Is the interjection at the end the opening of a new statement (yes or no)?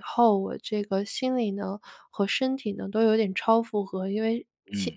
no